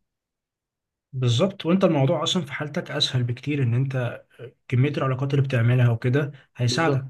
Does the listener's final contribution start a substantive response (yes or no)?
yes